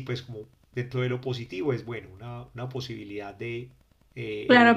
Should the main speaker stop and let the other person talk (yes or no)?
yes